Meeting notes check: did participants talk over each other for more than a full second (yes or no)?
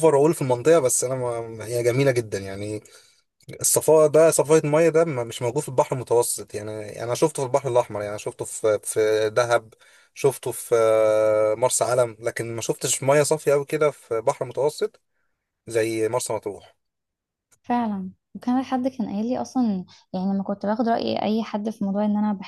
no